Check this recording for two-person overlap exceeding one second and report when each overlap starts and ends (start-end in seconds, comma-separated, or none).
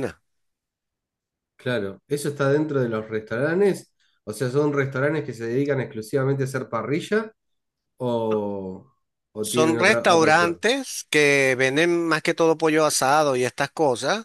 9.4-10.6